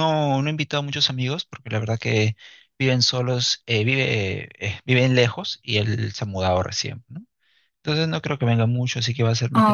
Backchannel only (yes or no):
yes